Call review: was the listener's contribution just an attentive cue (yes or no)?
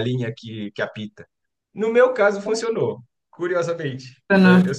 yes